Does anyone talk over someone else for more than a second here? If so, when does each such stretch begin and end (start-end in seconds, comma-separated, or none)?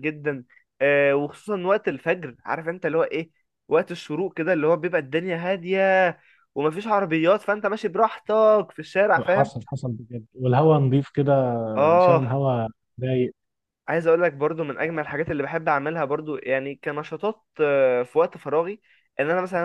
none